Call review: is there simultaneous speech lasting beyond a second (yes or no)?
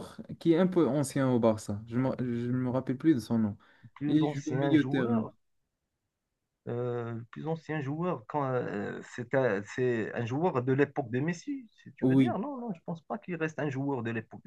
yes